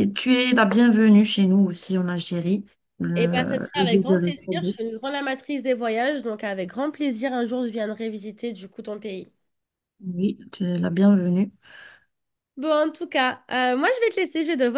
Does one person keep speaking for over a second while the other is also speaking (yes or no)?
yes